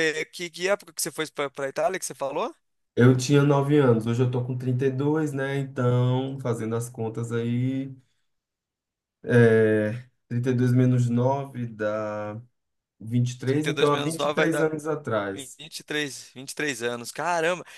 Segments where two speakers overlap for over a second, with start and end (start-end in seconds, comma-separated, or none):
13.4-14.7